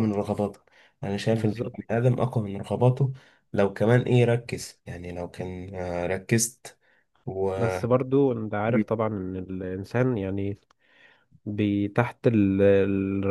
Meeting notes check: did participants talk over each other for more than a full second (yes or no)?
no